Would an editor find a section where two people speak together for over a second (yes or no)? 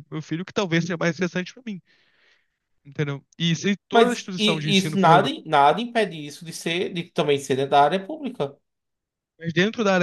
yes